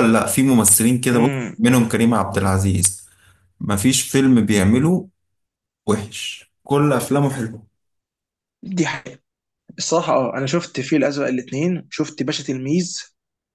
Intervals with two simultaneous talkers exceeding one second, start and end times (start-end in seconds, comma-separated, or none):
none